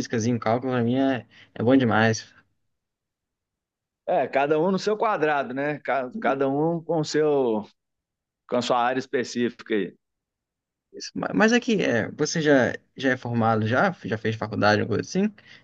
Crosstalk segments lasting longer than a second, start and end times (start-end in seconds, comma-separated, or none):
none